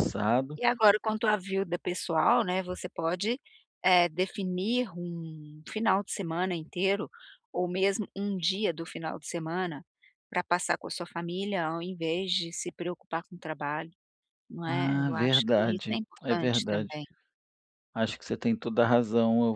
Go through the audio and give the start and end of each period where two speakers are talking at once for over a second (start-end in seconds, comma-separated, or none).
14.7-17.0